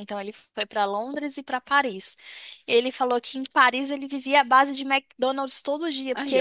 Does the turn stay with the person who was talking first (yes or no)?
yes